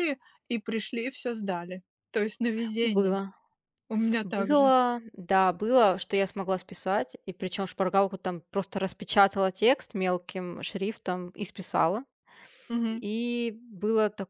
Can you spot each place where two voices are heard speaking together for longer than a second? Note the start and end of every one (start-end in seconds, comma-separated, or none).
none